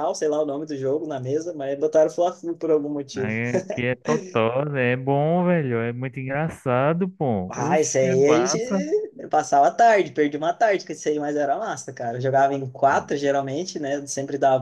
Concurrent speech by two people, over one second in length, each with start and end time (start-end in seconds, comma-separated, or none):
7.5-8.8